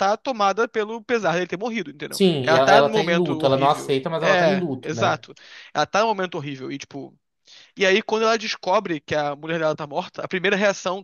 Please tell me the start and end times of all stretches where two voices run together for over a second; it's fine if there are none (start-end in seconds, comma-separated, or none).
2.1-5.2